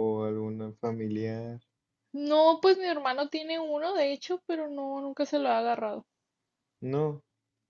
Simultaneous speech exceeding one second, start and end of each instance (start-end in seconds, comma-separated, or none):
none